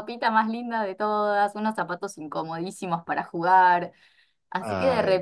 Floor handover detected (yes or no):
no